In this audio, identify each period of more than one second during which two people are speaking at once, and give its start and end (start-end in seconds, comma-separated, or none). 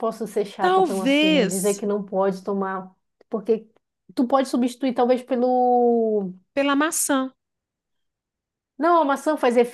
0.6-1.8